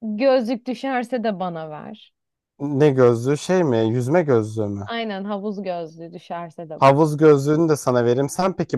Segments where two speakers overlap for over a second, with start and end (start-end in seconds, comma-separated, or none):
none